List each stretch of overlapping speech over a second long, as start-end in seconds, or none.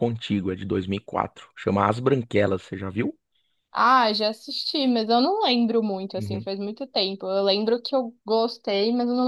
none